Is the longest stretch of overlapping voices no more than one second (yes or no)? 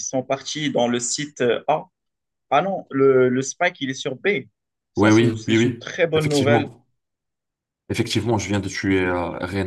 no